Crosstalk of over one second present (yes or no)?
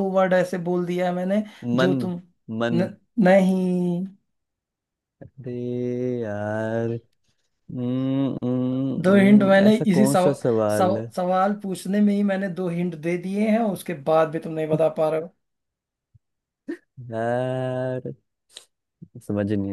yes